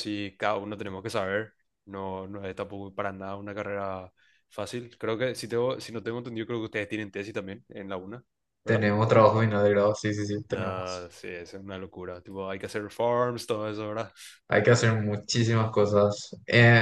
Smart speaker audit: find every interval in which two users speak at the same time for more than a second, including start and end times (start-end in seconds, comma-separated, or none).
none